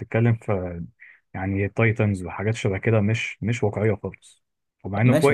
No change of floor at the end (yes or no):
no